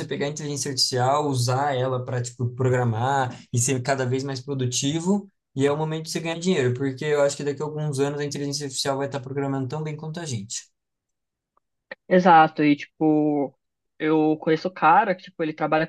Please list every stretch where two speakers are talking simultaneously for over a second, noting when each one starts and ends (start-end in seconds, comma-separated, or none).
none